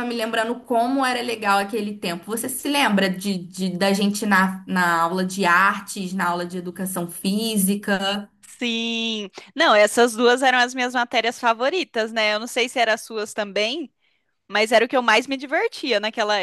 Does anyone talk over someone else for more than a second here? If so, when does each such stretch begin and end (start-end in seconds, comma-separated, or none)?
none